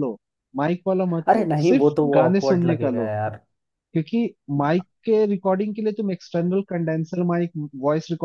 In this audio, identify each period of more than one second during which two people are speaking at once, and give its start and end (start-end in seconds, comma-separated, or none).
1.3-3.1